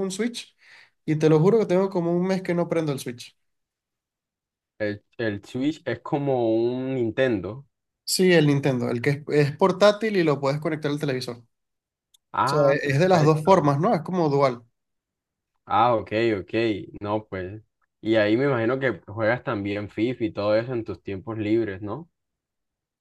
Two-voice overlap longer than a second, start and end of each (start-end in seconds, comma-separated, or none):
12.4-13.7